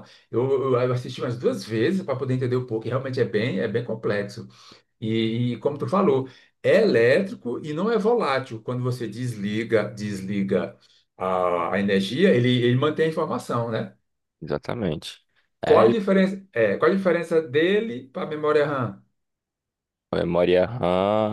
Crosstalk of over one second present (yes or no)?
no